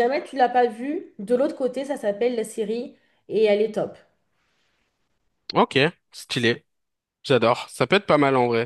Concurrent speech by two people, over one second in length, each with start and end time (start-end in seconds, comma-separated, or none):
none